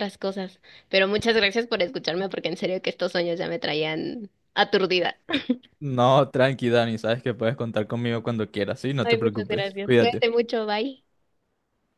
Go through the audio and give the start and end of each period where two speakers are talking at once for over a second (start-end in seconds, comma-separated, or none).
9.0-10.4